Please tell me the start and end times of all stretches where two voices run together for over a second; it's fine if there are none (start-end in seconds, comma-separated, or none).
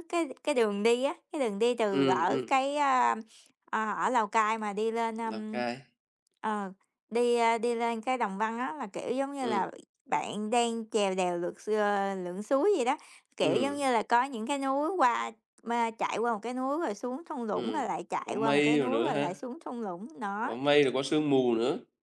17.5-19.3